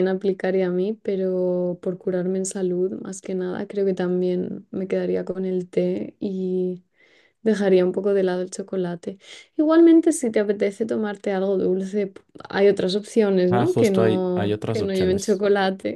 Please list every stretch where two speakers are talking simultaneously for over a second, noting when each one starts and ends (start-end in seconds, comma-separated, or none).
13.5-15.4